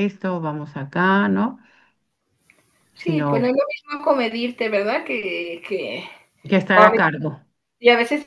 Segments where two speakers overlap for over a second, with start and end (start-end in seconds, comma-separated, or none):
none